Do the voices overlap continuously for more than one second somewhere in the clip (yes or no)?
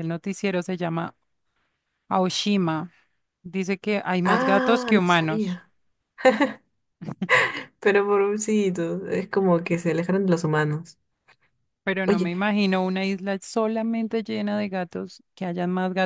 yes